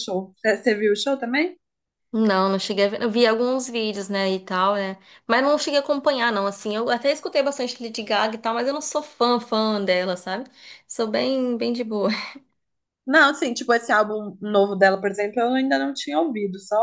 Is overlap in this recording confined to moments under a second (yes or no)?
yes